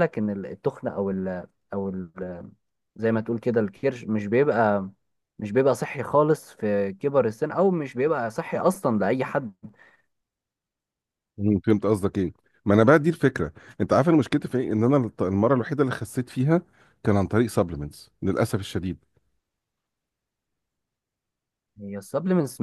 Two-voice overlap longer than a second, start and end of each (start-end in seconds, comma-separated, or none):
none